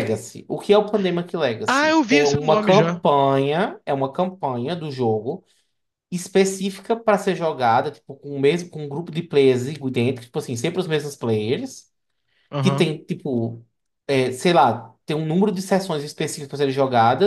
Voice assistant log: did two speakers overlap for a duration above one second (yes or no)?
yes